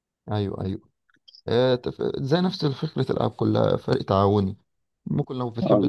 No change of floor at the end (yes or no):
yes